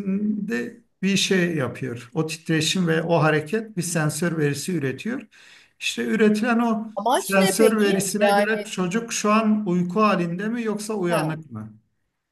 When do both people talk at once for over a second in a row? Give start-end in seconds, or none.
7.0-8.7